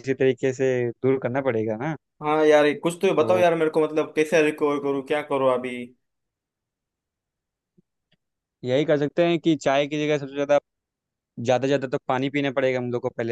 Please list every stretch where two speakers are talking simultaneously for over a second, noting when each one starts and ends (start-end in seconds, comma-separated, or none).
none